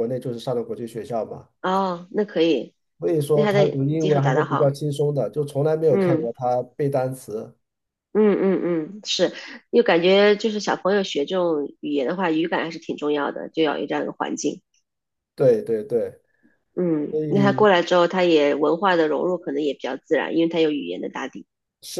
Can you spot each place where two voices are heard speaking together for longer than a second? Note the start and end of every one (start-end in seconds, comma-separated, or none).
3.3-4.7